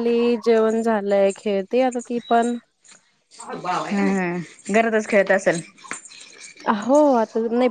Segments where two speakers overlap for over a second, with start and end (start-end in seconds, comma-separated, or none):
none